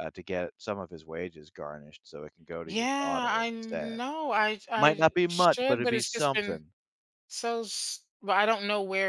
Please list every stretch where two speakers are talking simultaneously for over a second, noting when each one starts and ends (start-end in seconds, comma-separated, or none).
2.6-4.0, 4.8-6.6